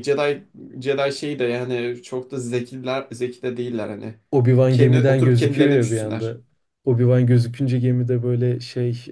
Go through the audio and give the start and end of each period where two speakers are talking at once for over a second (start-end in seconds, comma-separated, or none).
4.7-6.4